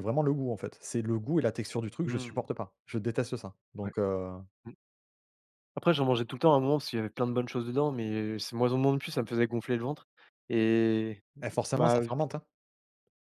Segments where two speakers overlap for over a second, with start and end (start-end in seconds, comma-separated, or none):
none